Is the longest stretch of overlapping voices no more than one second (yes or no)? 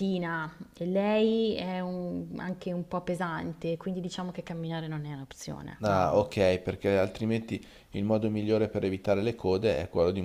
yes